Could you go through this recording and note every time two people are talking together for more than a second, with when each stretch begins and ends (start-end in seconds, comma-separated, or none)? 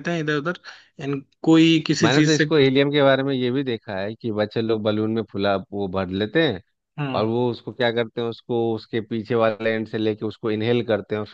none